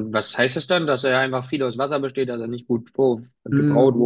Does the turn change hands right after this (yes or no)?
yes